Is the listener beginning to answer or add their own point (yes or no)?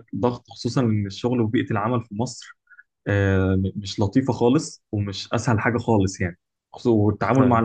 no